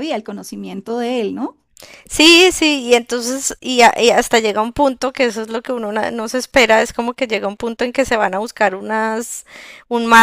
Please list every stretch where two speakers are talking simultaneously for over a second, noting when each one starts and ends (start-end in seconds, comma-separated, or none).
none